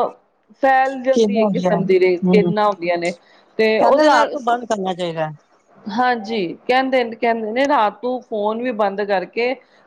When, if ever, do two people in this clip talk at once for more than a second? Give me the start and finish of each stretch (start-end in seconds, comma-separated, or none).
1.1-2.5